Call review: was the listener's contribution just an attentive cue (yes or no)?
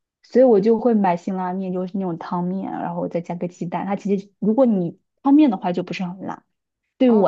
no